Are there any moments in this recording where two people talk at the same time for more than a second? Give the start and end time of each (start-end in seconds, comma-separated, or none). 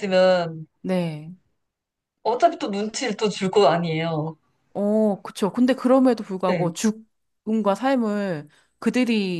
none